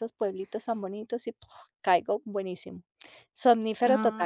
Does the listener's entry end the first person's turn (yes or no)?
yes